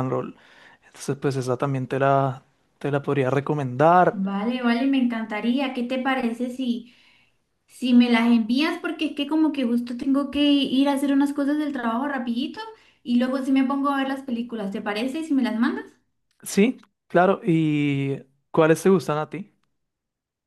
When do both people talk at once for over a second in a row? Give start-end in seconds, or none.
none